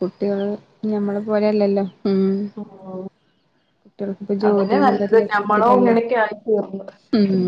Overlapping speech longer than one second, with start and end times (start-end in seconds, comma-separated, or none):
4.5-6.0